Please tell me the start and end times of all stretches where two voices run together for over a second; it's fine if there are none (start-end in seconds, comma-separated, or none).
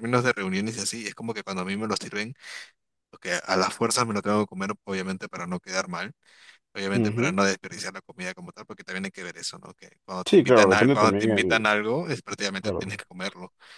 10.2-11.6